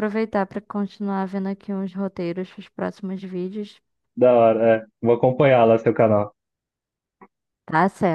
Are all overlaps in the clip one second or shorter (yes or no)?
yes